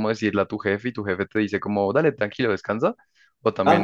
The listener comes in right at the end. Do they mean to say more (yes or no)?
yes